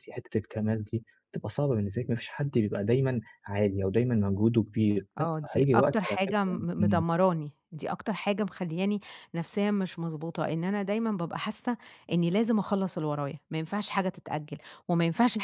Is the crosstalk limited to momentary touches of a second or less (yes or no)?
no